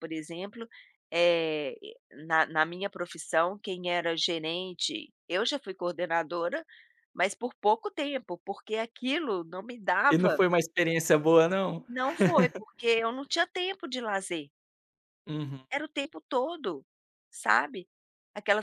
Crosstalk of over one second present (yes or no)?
no